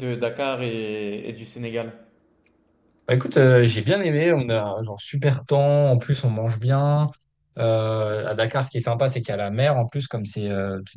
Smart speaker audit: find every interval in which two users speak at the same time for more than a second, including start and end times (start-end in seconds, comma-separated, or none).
none